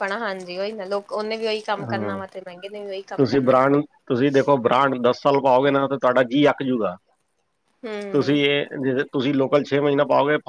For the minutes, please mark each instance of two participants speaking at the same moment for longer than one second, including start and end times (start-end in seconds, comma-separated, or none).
none